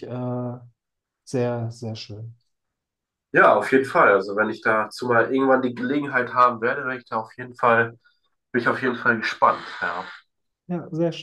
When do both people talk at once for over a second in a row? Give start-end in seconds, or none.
none